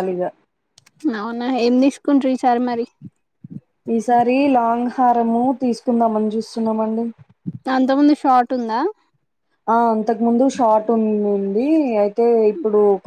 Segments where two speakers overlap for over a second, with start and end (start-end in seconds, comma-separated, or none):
none